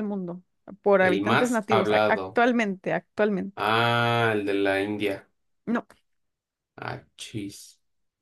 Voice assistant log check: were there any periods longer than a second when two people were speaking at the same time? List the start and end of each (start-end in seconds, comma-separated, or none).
1.0-2.4